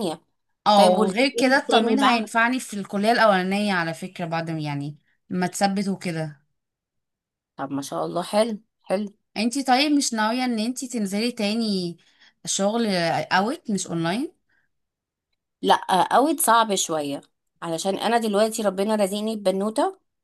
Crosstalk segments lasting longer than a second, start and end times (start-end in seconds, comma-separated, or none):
0.7-2.3